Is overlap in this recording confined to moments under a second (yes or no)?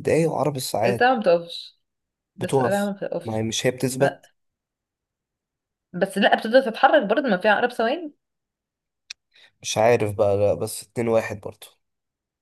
no